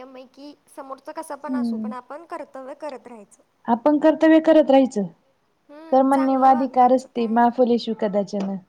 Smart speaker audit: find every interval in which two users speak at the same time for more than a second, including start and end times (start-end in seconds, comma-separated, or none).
5.9-7.4